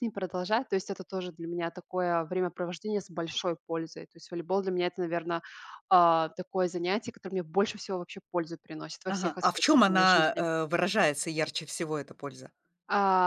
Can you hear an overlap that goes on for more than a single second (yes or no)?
yes